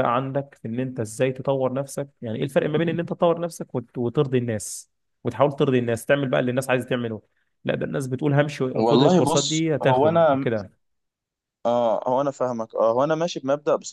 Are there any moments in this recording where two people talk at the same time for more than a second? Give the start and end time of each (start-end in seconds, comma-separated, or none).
8.8-10.5